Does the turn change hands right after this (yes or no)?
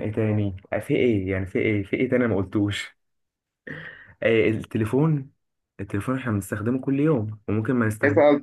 yes